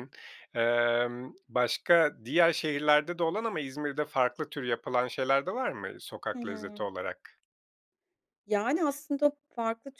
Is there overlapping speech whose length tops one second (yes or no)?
no